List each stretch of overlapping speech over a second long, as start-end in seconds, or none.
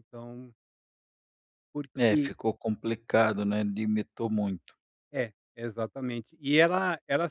none